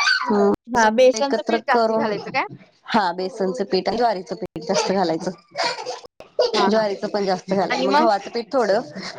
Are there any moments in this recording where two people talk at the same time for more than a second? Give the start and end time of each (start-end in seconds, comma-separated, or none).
0.8-2.1